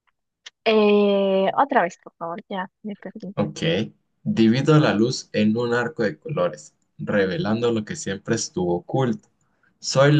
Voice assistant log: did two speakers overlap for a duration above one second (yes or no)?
no